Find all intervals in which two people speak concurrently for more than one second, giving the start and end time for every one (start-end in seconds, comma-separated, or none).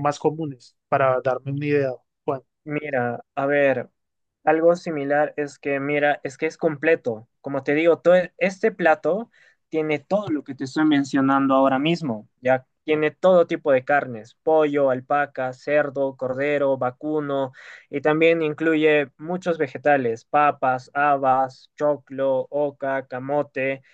none